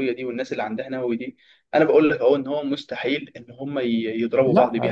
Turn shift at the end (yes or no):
no